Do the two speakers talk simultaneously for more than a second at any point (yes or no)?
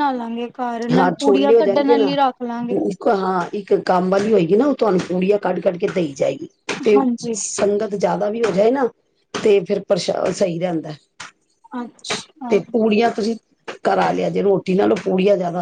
yes